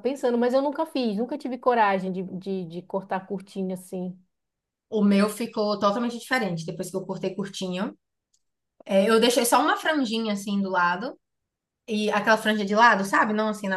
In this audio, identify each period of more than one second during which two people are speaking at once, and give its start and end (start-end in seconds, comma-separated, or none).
none